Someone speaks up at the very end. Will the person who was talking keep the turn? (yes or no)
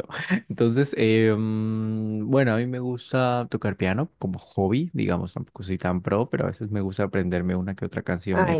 no